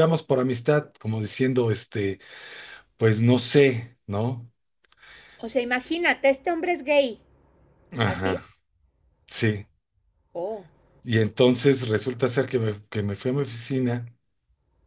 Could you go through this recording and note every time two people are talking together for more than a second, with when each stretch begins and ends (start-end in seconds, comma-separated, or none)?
none